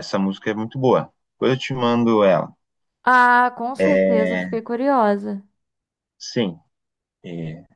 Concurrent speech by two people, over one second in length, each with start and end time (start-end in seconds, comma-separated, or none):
none